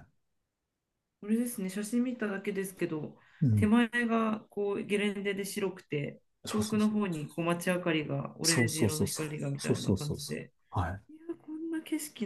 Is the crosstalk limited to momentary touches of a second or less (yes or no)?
no